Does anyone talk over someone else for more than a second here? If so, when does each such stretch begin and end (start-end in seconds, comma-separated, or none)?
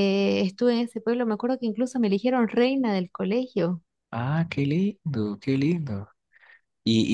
none